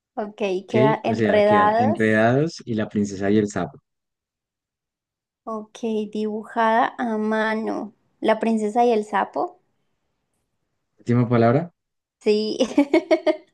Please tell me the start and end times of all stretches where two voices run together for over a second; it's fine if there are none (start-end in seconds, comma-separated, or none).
0.6-2.2